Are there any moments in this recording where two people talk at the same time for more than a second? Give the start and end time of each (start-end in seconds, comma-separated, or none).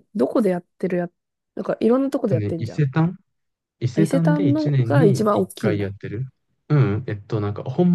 3.9-5.9